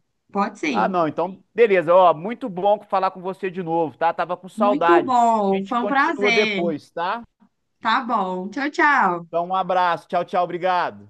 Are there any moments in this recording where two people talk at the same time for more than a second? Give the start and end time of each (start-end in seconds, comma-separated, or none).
4.5-6.6